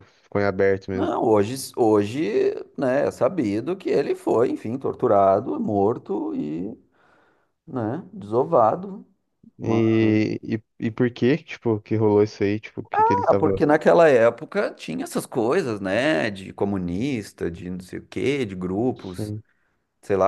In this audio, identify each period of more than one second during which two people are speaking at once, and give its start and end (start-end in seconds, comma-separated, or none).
none